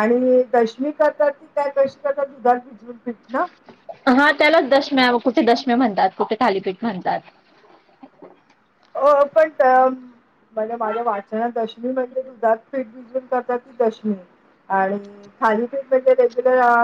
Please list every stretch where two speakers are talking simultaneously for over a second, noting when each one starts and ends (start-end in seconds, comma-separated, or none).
none